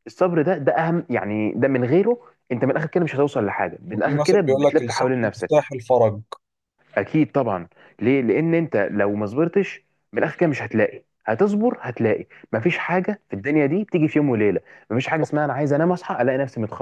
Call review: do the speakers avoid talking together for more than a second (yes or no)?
no